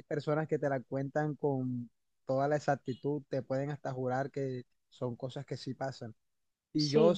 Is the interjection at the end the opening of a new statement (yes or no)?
no